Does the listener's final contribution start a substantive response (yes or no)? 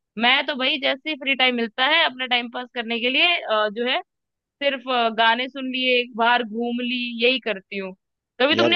no